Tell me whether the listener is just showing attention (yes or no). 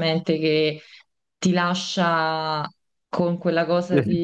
yes